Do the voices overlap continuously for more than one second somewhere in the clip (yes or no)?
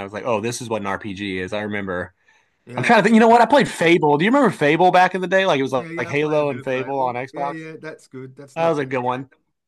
yes